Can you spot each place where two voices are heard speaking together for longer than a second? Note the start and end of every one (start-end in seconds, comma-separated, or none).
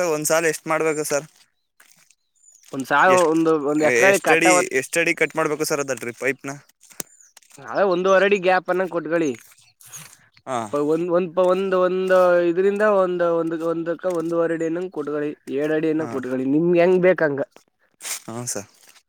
none